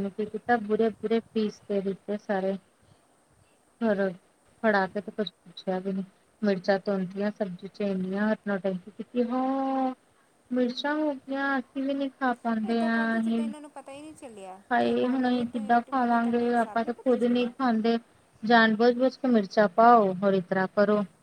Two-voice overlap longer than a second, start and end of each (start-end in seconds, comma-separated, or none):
14.7-17.5